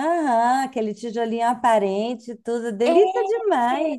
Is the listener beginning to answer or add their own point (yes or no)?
yes